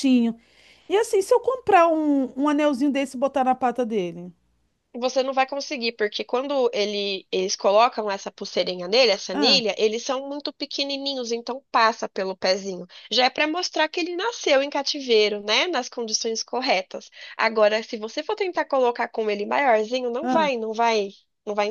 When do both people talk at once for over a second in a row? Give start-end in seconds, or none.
none